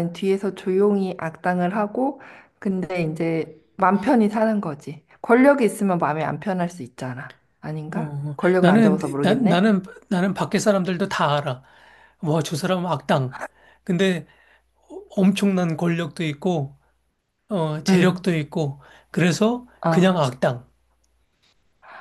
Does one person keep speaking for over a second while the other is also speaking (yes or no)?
yes